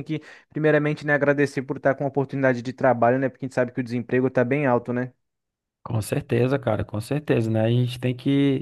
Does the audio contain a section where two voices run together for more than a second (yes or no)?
no